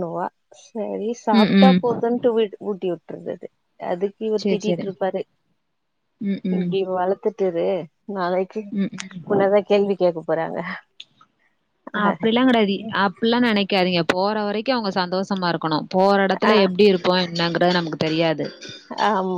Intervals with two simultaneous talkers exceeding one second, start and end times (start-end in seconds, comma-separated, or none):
none